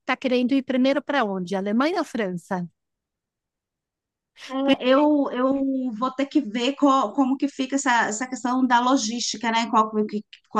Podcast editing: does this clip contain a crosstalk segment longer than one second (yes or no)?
no